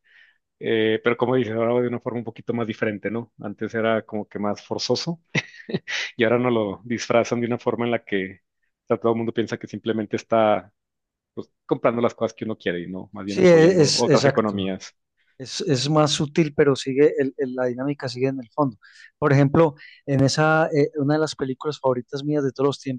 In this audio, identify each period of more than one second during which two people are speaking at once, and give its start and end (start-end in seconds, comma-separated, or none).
13.2-14.6